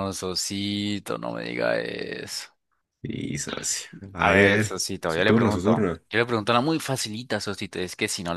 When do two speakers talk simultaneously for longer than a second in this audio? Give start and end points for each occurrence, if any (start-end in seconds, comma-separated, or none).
4.2-6.0